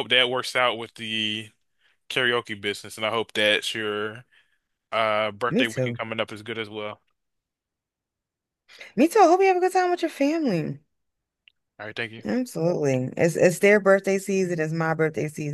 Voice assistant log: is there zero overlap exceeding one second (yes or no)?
yes